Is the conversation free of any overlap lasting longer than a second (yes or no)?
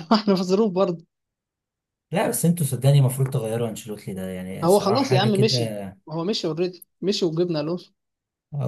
no